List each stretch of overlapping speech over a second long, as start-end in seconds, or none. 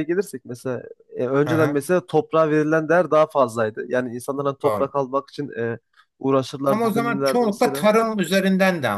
6.7-7.9